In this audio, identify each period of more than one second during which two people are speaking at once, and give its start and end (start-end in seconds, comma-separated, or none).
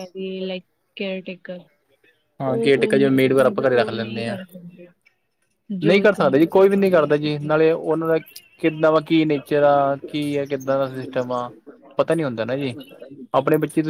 2.5-4.4, 5.8-7.6